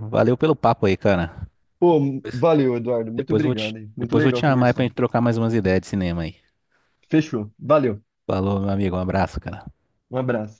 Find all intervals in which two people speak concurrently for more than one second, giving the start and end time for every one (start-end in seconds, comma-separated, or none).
3.1-4.9